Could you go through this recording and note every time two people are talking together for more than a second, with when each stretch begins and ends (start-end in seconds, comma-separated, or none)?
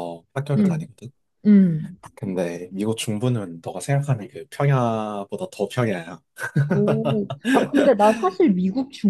none